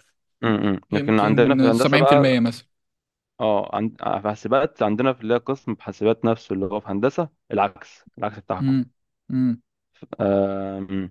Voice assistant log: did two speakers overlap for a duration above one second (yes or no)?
yes